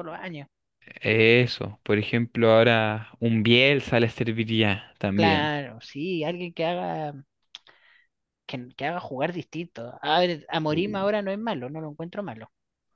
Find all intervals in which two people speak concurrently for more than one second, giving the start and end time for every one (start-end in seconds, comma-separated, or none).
none